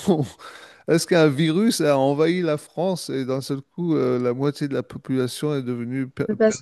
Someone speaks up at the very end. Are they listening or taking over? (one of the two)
taking over